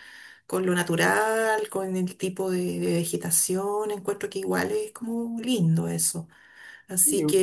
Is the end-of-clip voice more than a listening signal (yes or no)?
no